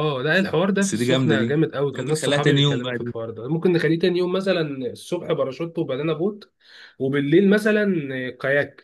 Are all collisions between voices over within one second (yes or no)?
no